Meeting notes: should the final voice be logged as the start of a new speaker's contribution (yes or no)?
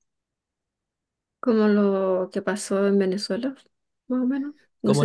yes